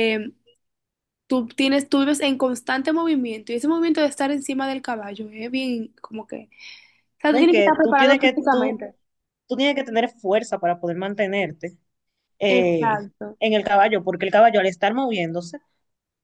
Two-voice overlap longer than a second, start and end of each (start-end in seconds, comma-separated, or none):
7.3-8.8